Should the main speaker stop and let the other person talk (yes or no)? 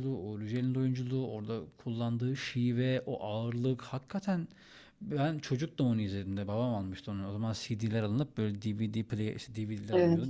no